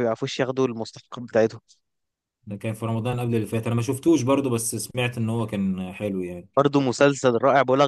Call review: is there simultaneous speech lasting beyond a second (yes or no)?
no